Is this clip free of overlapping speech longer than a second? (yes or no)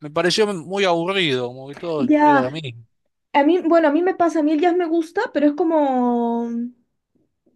yes